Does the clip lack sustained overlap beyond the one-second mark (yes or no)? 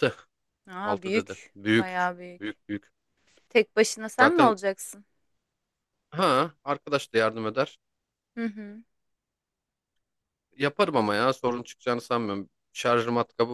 no